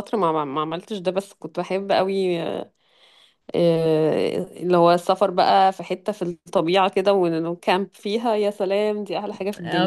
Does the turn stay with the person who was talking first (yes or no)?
no